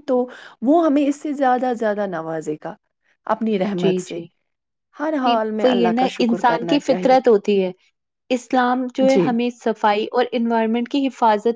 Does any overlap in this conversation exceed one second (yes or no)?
yes